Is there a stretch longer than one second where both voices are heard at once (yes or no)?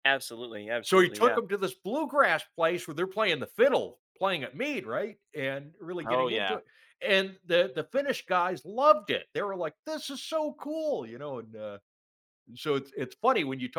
no